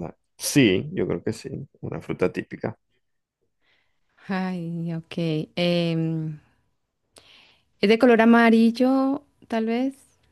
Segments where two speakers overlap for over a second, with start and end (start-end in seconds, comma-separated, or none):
none